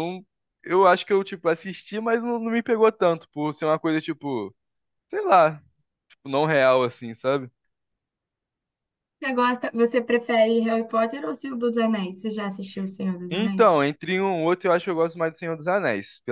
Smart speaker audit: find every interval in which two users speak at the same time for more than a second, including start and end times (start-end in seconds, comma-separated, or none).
none